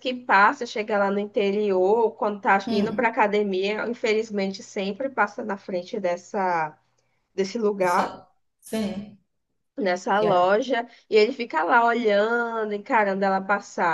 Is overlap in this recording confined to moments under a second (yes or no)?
yes